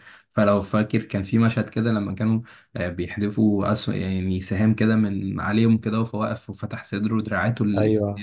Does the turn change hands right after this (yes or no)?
yes